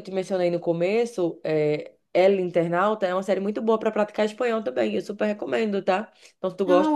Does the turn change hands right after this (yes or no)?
no